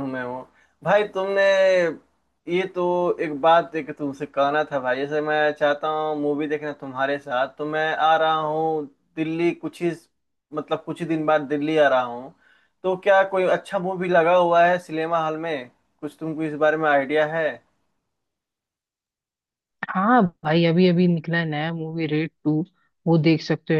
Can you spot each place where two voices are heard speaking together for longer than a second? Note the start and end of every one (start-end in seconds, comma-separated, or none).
none